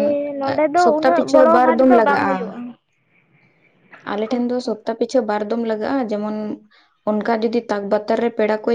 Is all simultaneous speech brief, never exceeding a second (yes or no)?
no